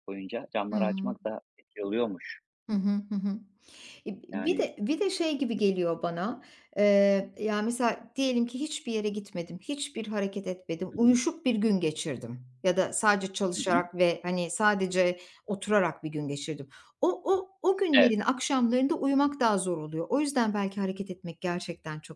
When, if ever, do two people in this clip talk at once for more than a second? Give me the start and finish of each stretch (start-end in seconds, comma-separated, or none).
none